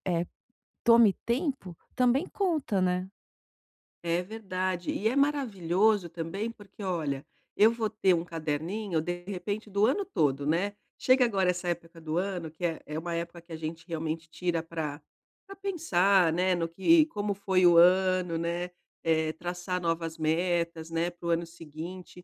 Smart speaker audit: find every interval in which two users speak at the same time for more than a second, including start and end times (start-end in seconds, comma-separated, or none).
none